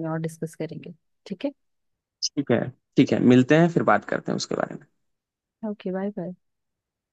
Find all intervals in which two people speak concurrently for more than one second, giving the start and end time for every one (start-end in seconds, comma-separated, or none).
none